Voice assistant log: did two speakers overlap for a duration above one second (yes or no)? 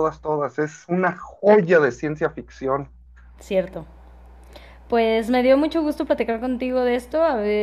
no